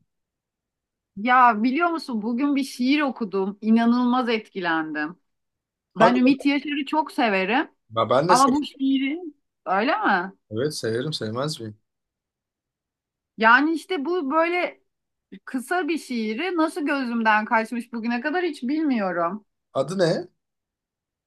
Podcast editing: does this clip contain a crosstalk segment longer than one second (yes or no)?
no